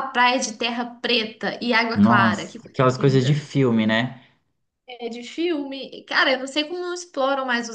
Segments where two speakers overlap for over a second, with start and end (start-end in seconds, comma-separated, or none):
1.9-3.5